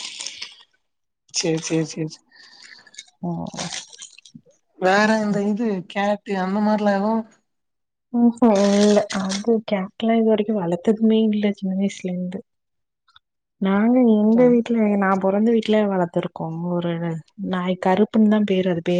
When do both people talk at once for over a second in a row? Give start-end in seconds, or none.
none